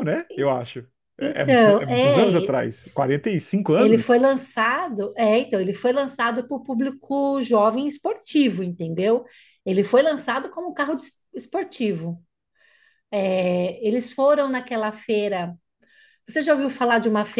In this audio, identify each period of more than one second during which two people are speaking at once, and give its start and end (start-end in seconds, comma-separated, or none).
1.2-2.5